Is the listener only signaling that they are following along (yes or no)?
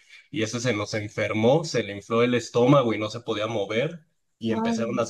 yes